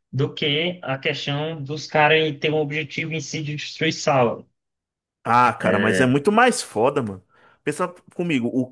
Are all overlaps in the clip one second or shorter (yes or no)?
yes